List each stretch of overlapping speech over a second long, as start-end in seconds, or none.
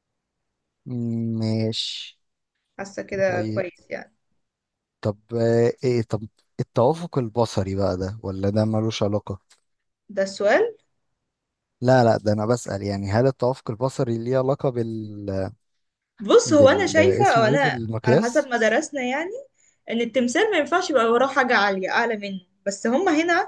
16.4-18.5